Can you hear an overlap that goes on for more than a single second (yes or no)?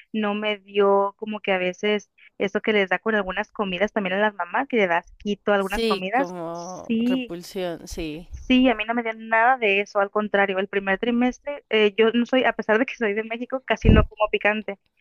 yes